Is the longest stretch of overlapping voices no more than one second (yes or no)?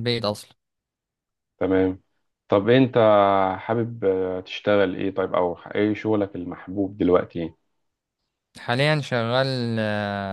yes